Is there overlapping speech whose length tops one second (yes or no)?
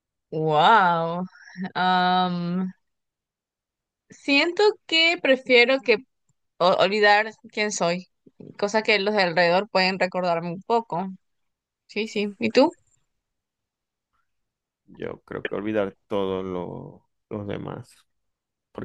no